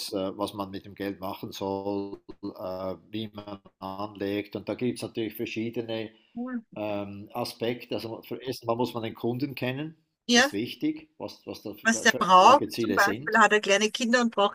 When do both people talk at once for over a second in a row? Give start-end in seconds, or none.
11.8-13.4